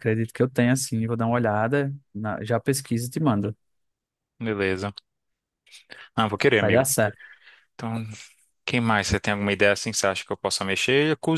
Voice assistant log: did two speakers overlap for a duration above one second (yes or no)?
no